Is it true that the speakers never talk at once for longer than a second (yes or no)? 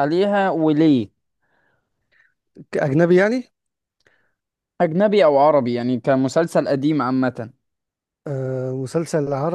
yes